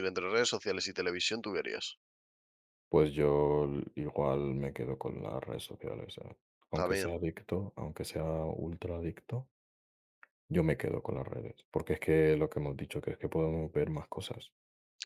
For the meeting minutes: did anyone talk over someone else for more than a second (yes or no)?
no